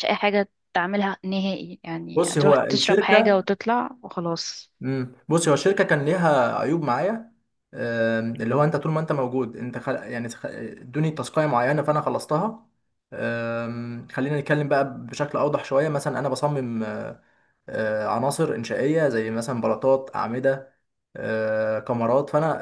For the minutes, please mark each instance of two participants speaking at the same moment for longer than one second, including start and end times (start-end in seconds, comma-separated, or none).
2.2-3.5